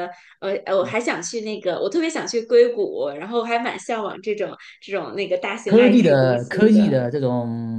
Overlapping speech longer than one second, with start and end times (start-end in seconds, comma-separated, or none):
5.7-7.0